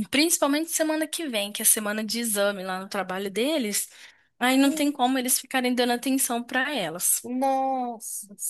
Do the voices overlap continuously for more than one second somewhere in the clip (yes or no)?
no